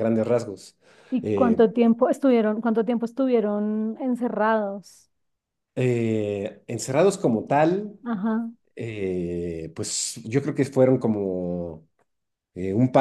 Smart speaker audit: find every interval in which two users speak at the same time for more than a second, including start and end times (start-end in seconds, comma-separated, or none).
none